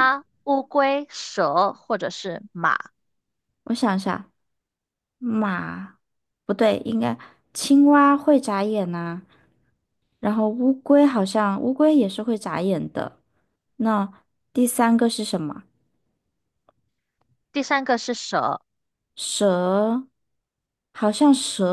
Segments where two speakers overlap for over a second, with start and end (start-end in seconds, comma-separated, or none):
none